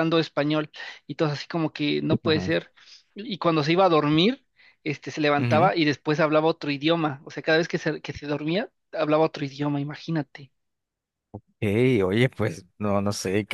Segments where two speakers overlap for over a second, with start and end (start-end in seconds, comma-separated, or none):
none